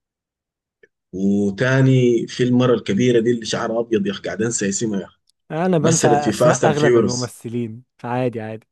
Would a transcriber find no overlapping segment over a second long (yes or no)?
no